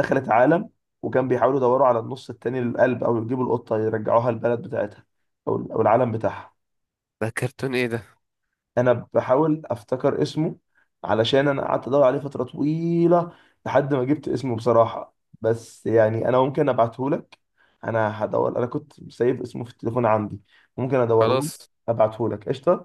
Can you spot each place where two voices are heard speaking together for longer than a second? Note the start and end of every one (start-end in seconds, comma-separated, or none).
none